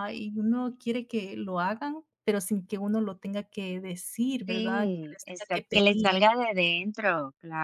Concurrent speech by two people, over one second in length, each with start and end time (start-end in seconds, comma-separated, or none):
4.5-6.2